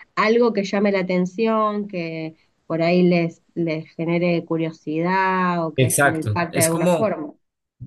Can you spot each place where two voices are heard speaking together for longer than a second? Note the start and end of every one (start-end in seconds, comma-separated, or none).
5.8-7.2